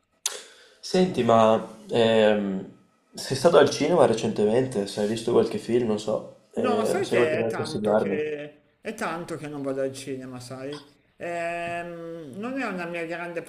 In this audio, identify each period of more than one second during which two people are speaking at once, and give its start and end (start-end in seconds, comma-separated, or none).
6.5-8.4